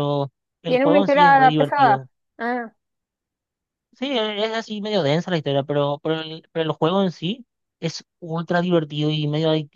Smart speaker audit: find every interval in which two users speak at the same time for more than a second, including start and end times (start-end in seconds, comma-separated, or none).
0.7-2.1